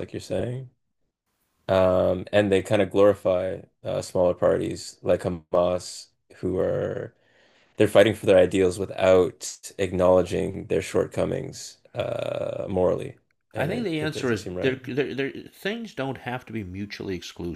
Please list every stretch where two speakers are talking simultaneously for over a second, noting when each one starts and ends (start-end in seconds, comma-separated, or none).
13.6-14.8